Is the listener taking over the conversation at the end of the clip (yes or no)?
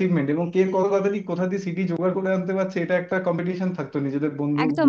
yes